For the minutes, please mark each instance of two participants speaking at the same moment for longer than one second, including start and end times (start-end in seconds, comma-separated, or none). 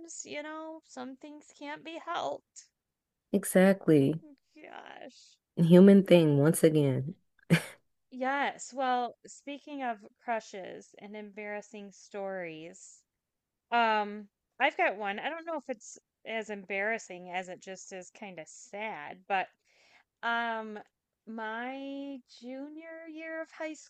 none